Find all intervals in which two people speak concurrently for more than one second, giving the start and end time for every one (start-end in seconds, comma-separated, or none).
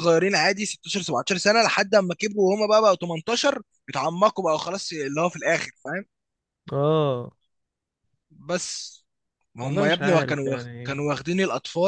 9.6-11.1